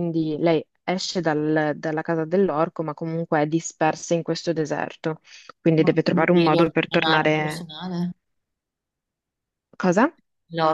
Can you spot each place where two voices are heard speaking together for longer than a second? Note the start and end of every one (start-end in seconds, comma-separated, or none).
5.8-7.7